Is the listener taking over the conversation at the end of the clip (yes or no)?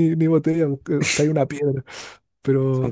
yes